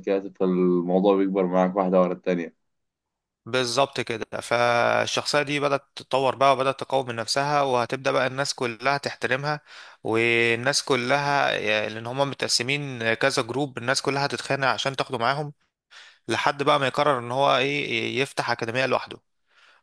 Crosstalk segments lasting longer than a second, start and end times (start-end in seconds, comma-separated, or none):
none